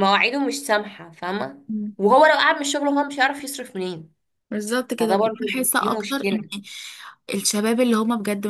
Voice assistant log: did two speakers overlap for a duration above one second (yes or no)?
yes